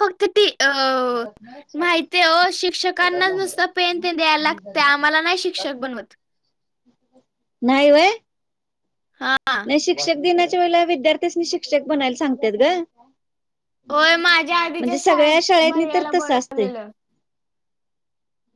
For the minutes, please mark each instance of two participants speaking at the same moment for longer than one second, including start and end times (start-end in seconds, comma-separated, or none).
13.9-16.7